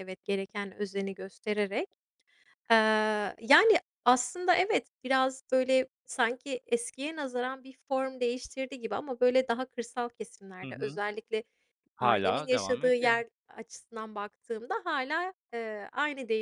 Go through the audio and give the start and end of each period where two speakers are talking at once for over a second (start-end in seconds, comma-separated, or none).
12.0-13.2